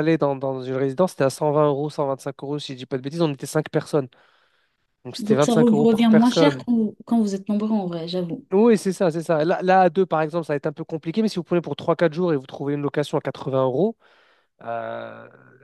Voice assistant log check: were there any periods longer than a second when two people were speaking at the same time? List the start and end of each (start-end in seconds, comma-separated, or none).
5.2-6.6